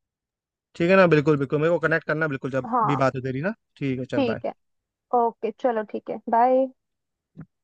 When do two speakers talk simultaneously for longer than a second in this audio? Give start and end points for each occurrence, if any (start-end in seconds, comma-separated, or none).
none